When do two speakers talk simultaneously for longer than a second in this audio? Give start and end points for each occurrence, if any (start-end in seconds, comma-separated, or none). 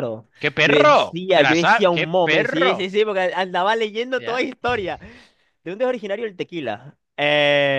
0.6-2.9